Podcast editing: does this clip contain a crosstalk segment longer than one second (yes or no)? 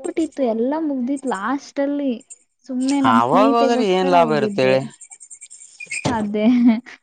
yes